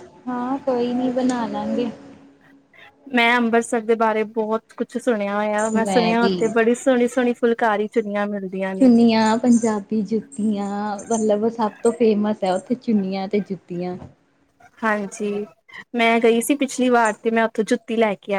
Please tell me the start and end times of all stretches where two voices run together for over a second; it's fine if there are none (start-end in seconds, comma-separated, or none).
none